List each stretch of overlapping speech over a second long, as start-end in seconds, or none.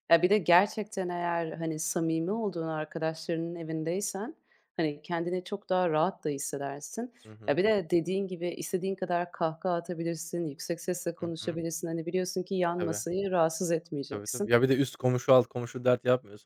none